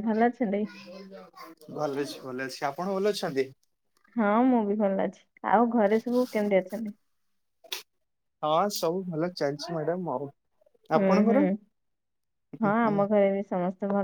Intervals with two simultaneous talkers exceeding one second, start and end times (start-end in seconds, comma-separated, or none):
none